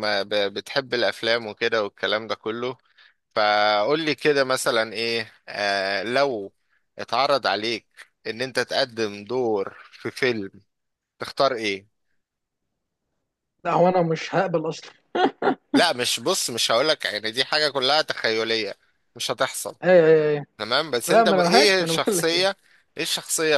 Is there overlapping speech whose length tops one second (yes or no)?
yes